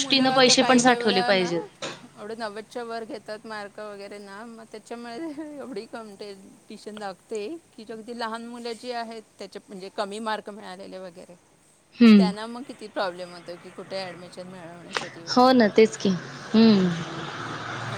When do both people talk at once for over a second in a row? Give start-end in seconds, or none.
none